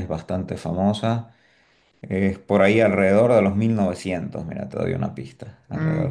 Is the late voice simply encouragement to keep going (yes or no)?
no